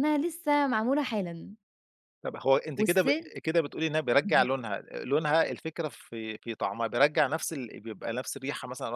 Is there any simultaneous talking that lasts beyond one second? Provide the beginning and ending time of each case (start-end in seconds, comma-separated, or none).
none